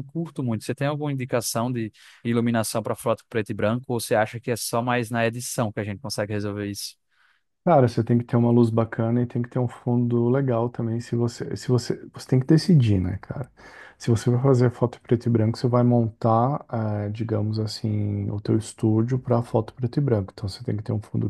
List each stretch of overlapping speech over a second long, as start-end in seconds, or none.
none